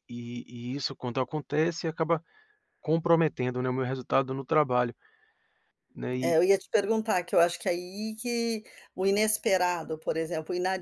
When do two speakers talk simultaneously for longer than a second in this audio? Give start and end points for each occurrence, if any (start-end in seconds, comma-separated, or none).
none